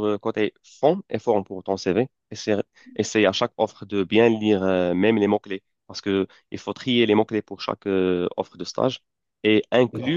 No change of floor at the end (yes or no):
yes